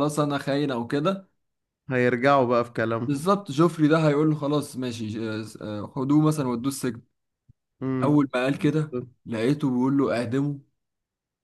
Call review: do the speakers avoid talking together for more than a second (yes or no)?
yes